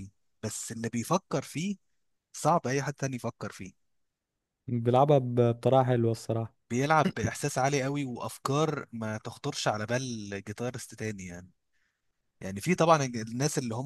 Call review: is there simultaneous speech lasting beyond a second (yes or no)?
no